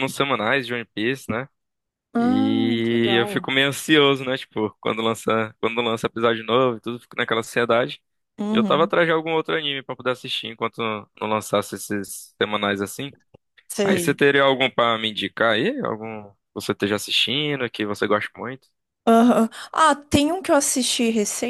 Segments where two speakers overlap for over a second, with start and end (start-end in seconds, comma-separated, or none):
2.2-3.5